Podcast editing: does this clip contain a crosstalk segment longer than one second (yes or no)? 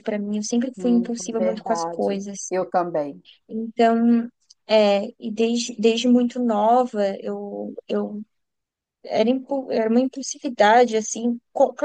yes